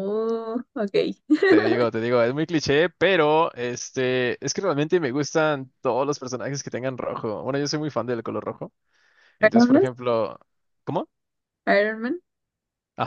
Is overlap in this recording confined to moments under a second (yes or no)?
yes